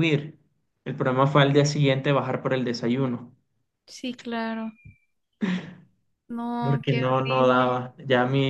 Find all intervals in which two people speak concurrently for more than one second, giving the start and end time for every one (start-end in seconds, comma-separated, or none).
6.6-7.8